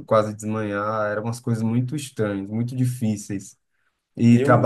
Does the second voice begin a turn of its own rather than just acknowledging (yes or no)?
no